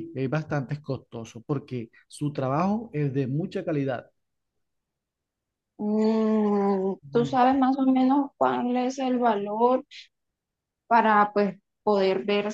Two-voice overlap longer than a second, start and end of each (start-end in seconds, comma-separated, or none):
none